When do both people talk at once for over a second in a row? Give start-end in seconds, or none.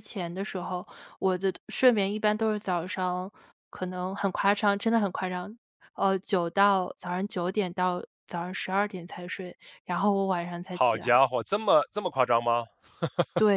none